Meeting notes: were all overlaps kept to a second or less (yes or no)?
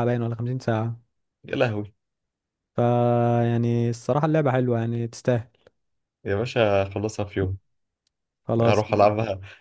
yes